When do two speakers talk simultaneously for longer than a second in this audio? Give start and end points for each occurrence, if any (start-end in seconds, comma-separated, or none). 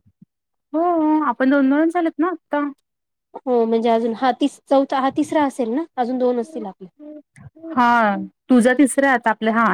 none